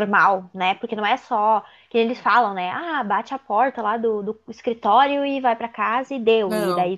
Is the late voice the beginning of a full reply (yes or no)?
no